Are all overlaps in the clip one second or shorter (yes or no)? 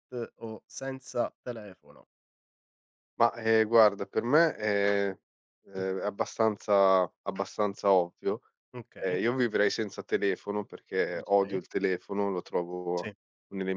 yes